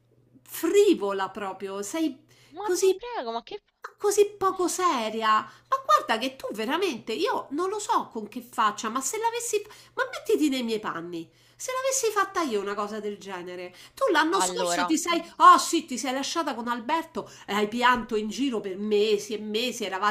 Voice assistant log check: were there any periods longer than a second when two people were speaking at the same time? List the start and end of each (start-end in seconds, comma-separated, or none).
none